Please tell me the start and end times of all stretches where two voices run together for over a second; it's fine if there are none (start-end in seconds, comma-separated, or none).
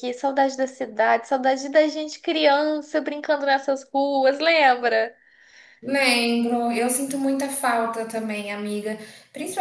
none